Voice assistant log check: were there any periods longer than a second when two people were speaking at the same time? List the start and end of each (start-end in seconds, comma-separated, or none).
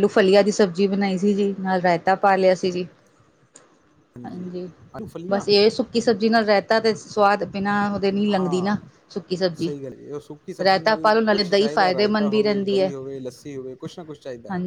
10.6-12.9